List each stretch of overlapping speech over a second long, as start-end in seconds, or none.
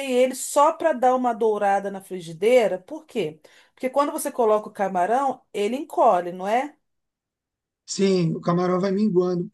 none